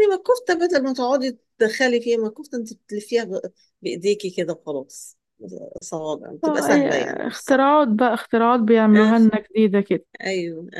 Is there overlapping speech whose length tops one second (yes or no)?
yes